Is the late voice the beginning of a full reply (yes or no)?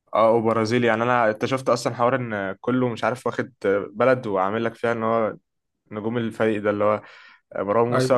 no